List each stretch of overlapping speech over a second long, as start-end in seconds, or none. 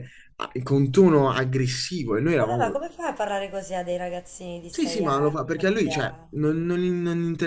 4.7-6.4